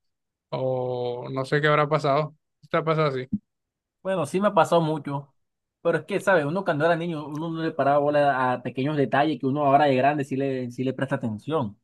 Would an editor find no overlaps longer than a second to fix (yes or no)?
yes